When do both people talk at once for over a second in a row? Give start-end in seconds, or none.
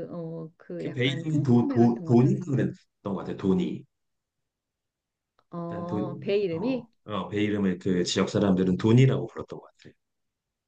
0.8-2.4, 5.7-6.9